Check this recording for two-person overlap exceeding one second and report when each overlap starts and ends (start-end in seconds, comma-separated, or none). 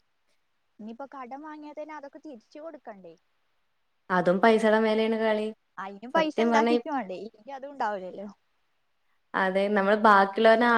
none